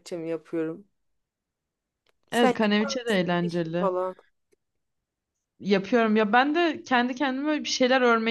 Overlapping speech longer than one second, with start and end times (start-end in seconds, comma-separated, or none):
none